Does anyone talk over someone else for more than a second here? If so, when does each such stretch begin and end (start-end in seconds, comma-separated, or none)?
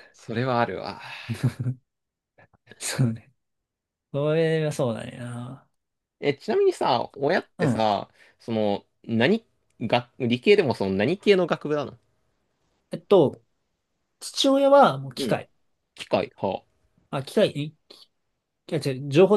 none